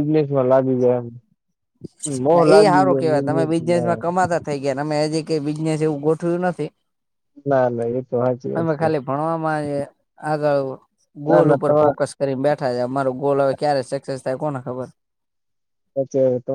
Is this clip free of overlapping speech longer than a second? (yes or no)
no